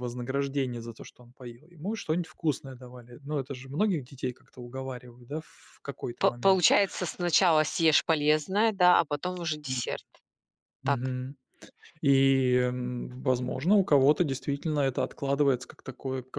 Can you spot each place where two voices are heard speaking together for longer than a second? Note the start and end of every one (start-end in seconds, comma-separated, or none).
none